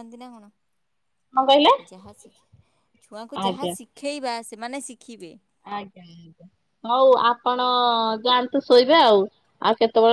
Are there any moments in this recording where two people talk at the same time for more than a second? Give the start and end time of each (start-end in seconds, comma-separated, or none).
none